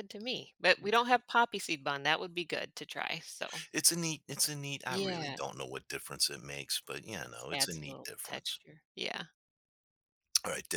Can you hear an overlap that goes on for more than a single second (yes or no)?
yes